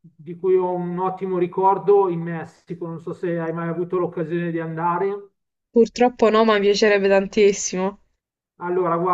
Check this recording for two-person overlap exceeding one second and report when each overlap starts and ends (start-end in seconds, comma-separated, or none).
none